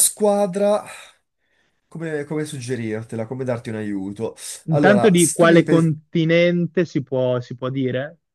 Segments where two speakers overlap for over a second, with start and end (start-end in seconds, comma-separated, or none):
4.7-5.9